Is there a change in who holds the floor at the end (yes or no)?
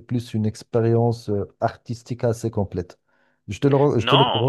yes